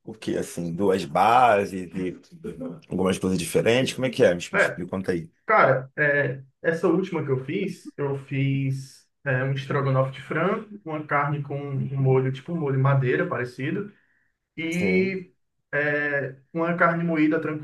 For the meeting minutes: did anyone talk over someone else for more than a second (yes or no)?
no